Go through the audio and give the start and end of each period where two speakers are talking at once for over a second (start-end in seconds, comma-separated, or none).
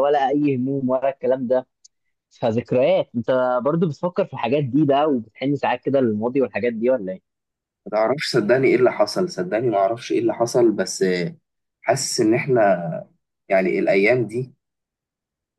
none